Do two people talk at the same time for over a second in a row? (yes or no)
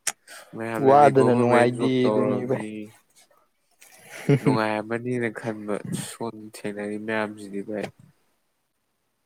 yes